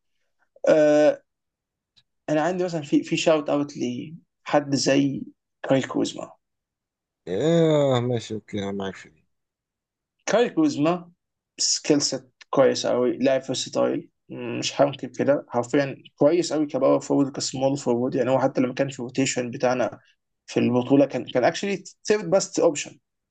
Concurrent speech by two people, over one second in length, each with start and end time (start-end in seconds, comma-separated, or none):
none